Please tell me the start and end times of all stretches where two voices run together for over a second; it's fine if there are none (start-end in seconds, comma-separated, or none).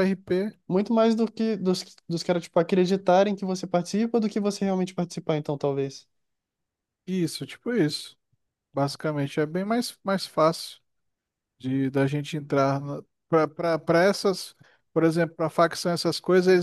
none